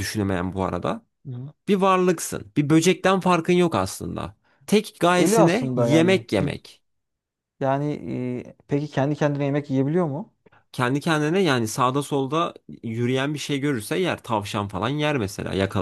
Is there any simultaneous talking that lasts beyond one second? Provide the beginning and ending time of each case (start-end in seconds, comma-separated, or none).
5.2-6.7